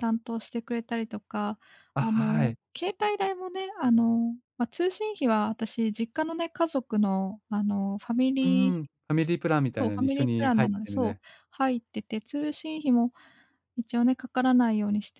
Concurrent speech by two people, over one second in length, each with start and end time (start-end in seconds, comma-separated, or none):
9.7-11.1